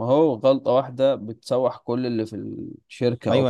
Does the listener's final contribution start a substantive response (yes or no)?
yes